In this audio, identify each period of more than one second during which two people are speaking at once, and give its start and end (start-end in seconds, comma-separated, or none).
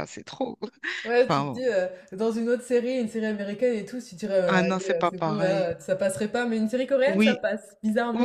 4.4-5.7